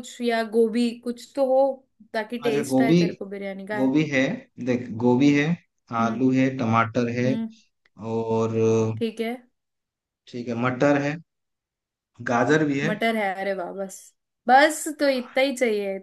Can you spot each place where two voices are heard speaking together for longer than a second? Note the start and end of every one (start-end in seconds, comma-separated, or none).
none